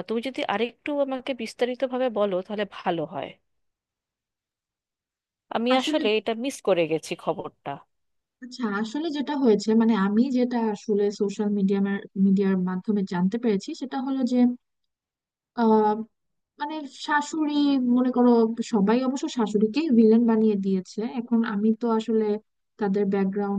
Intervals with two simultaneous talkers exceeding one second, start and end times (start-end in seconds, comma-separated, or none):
none